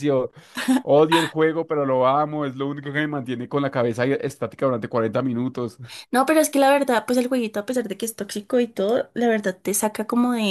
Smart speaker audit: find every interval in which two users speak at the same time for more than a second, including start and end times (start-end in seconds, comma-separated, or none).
none